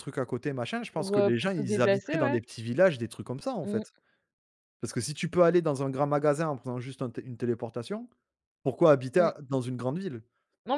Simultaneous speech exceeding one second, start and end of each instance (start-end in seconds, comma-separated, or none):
0.9-2.4